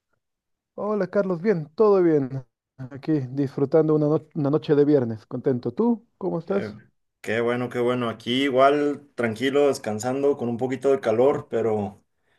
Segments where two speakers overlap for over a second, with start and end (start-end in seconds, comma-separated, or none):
none